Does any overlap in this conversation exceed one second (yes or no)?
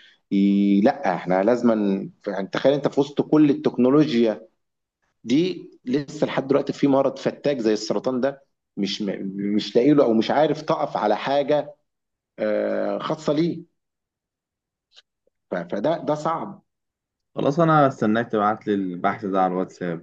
no